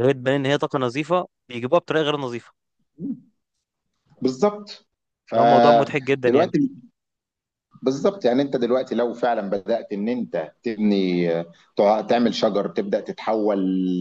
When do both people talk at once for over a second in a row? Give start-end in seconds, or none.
5.3-6.5